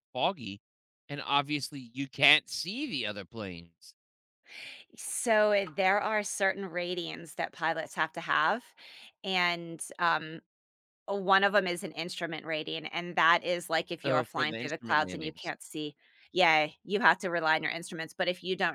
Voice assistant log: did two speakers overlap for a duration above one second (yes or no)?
yes